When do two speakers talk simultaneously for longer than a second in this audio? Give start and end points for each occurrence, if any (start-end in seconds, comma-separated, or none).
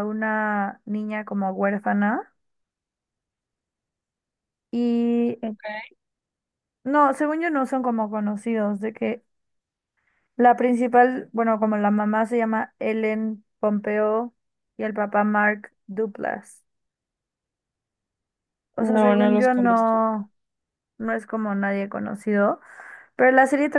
18.8-20.0